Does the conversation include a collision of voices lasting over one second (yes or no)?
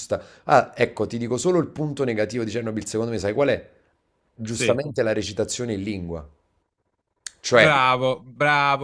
no